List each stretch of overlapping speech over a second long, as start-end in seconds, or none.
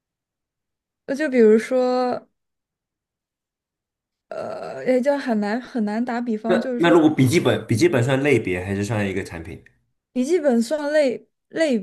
none